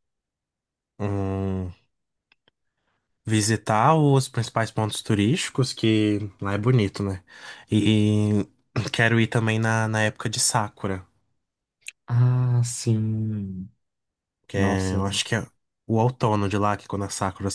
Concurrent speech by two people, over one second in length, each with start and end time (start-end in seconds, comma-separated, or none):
none